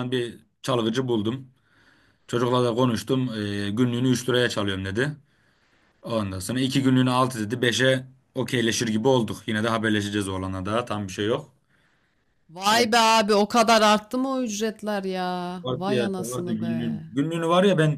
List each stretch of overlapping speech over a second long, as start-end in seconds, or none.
15.6-17.0